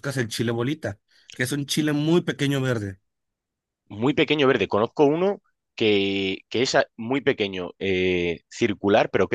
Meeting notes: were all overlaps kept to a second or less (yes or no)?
yes